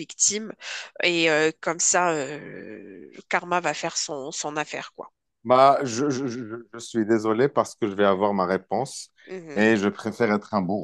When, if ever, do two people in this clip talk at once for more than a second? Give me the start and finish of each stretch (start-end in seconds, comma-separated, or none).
none